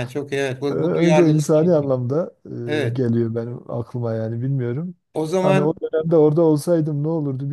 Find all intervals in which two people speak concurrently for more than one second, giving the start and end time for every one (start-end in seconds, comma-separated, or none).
0.7-1.9